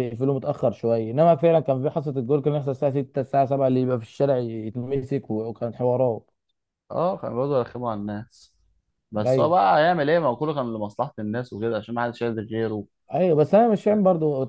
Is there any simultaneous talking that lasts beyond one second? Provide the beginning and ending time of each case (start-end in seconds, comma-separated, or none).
none